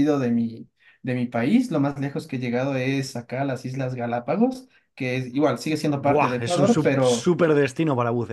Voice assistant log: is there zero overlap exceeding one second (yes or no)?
no